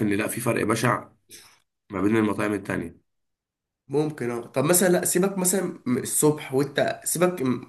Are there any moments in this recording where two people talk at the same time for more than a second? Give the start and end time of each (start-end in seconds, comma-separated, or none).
none